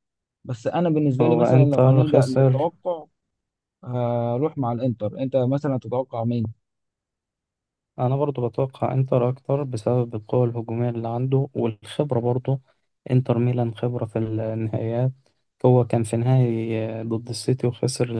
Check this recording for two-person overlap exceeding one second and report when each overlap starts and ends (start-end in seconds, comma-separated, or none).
1.2-2.7